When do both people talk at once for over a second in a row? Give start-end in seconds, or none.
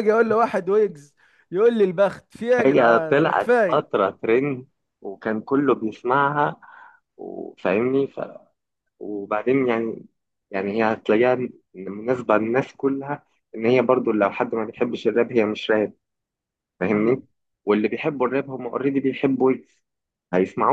2.6-3.9